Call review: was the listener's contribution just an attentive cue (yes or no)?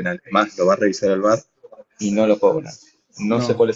yes